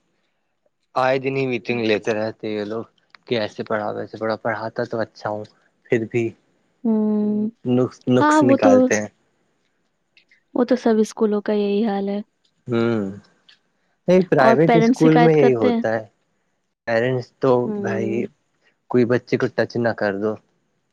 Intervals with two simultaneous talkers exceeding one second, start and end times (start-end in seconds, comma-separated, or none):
14.4-15.8